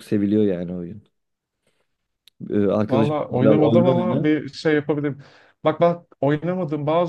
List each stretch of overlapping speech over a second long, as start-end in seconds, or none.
2.9-4.3